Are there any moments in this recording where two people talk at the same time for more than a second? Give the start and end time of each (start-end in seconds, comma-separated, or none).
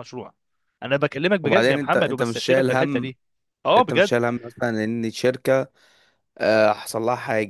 1.4-3.1